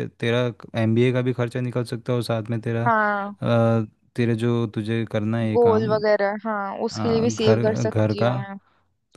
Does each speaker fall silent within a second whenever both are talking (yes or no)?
no